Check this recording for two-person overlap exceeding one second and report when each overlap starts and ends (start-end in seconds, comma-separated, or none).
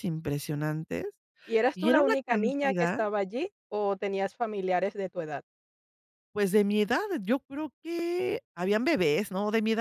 1.7-3.0